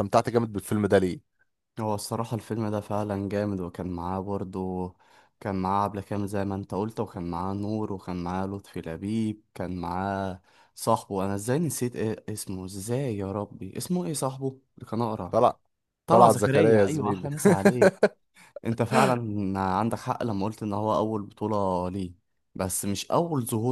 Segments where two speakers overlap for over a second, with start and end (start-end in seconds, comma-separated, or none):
16.1-17.3